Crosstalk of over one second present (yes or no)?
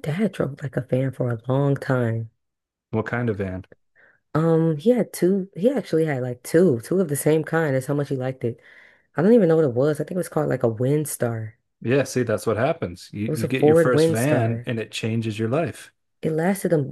yes